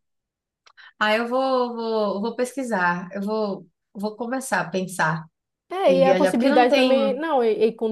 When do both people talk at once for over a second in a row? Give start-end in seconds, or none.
5.9-7.2